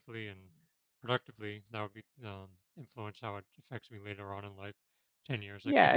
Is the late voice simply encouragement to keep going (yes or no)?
no